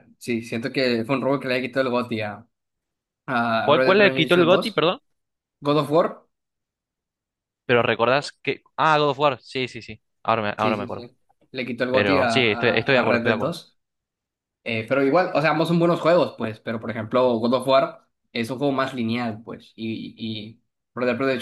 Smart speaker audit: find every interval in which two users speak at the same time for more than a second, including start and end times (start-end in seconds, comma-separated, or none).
3.6-4.9, 11.9-13.6